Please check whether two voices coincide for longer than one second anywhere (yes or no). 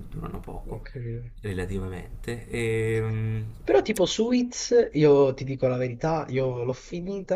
no